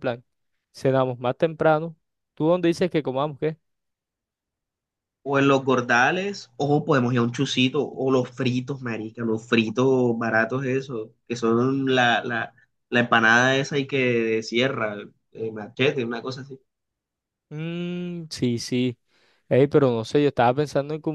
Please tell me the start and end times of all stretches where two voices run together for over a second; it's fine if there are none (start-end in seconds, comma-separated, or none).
none